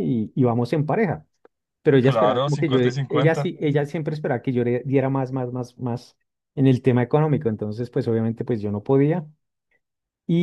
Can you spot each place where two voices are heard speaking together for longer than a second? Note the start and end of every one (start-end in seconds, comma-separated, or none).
2.0-3.5